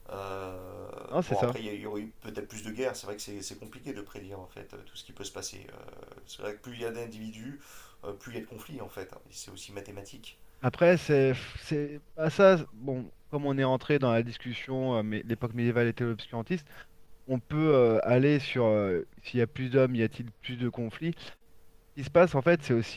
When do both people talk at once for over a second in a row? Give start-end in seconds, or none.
none